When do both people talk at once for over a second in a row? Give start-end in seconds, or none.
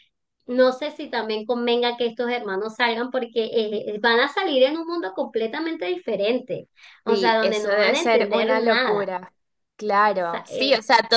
7.1-9.1